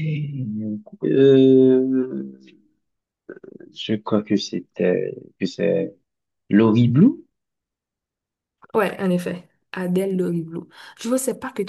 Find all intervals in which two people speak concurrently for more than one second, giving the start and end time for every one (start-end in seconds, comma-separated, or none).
none